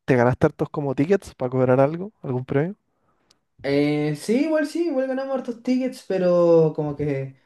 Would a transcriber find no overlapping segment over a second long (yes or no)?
yes